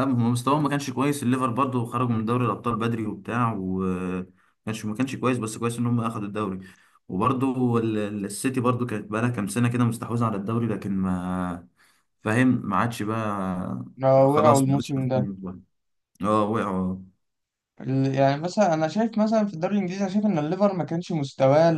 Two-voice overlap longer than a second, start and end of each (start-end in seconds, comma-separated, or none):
14.0-15.3